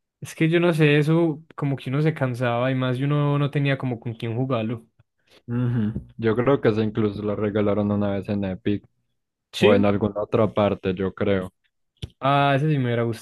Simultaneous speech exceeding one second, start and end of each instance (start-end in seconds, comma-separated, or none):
none